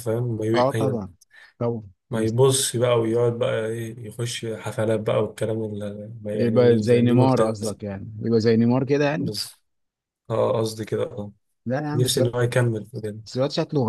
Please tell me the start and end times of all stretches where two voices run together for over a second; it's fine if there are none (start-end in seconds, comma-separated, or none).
6.3-7.8